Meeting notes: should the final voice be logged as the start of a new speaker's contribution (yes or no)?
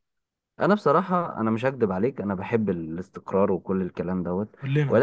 no